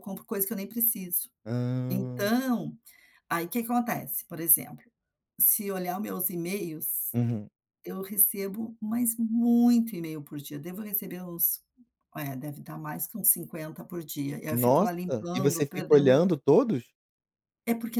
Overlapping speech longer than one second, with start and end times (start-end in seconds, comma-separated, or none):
14.5-16.2